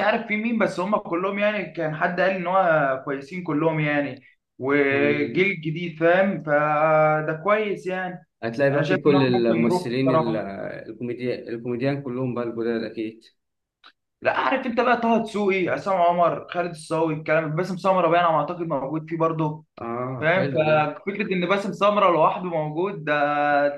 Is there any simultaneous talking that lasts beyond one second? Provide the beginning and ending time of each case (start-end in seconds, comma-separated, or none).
8.7-10.3